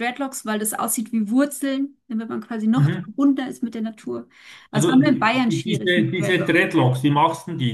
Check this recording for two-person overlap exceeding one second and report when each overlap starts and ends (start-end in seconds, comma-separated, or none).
4.7-6.7